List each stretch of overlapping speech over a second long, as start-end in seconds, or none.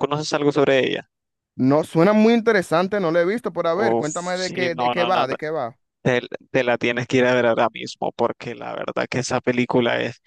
3.8-5.4